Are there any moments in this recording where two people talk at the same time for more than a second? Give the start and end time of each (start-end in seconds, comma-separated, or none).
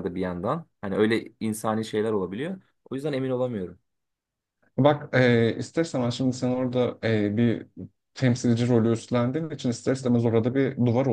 none